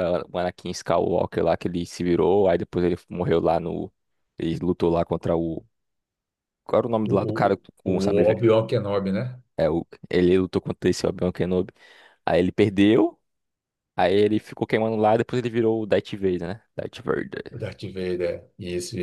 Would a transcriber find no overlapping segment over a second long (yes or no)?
no